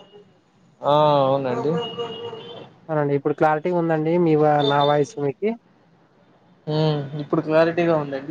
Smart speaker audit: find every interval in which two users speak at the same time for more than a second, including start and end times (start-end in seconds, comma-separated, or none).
none